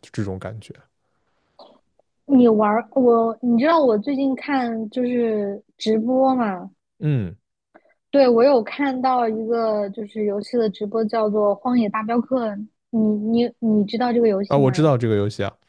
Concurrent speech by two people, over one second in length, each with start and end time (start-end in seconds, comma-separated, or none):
none